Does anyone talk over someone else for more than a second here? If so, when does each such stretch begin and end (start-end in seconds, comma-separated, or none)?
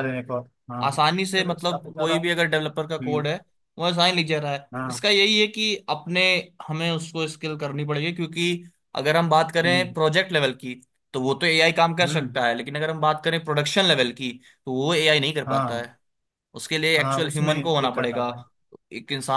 0.8-2.1, 17.0-18.3